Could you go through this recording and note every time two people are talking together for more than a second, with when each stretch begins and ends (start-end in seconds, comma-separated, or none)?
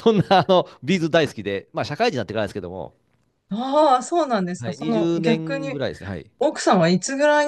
4.6-5.8